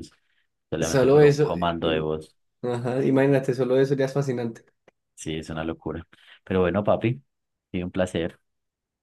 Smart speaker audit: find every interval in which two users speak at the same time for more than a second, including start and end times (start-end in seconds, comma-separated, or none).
0.8-2.1